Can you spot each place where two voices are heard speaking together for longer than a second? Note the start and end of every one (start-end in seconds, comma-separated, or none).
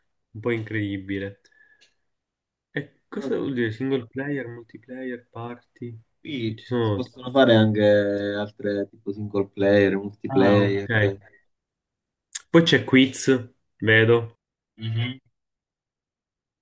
none